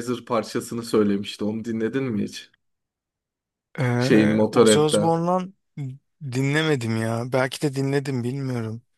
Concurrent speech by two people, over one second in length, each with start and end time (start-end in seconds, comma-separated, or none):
4.0-5.2